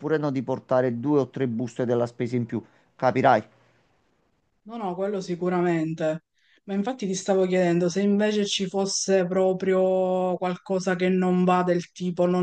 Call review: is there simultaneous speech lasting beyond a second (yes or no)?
no